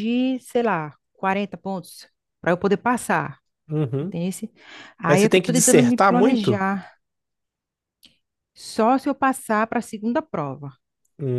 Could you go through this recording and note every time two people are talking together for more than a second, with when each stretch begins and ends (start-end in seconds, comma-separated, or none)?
5.1-6.7